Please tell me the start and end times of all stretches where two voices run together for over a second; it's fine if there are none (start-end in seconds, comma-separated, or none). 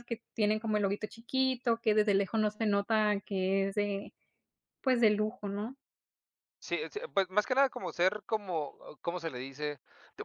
none